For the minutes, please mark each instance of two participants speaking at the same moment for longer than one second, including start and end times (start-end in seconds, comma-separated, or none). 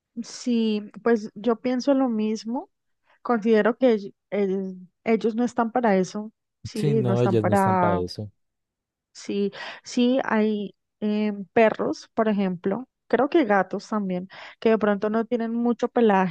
6.7-8.0